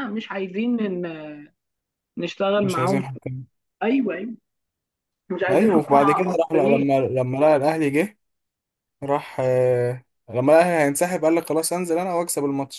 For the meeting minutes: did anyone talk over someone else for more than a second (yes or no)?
yes